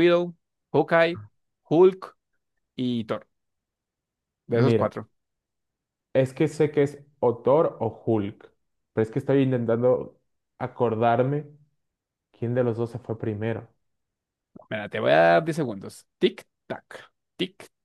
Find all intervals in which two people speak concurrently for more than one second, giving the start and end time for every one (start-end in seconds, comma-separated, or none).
none